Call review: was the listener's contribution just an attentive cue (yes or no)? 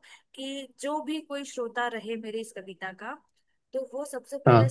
yes